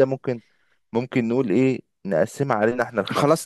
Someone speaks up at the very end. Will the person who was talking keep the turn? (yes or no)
no